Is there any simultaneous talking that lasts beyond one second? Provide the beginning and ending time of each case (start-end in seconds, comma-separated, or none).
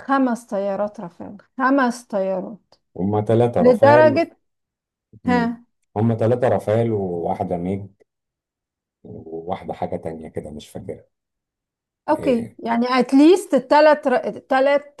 none